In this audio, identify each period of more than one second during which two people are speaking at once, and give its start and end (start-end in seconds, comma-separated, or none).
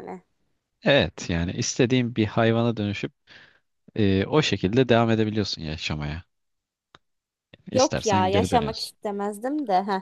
7.7-9.0